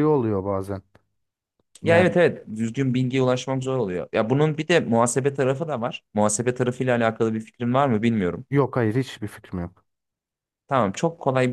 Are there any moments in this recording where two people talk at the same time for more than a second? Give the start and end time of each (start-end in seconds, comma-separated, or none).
none